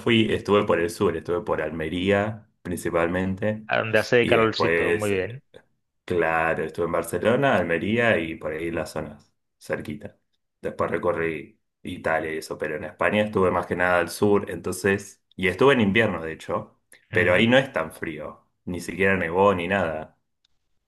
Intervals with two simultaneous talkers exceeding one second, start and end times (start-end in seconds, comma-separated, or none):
4.2-5.4